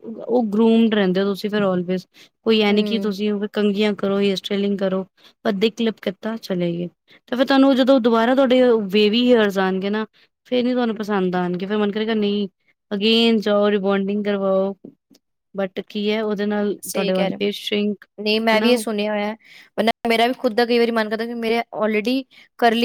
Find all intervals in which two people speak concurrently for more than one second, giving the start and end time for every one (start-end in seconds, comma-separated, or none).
none